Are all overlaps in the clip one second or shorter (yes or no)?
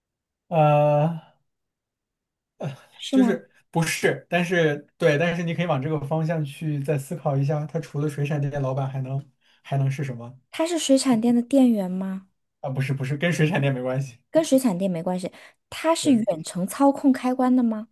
yes